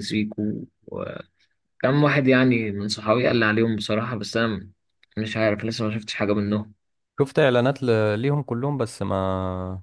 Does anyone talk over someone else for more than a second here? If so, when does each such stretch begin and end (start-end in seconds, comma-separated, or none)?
none